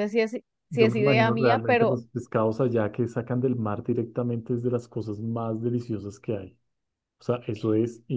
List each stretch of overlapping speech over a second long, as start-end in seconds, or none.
0.7-2.0